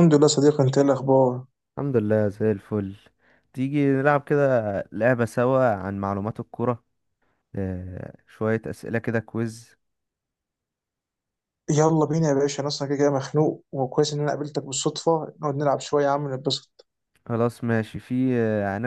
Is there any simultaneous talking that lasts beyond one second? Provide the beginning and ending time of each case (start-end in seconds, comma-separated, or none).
none